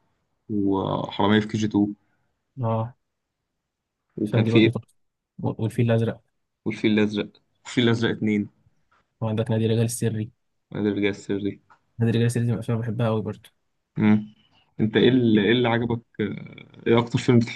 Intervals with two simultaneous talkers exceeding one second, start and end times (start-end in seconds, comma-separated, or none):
none